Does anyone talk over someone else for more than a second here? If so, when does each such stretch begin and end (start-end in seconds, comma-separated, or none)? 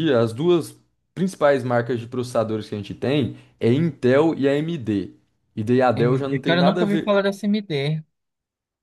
6.0-7.2